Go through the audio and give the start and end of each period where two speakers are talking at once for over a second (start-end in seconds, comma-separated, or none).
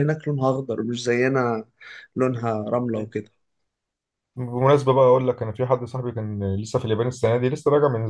none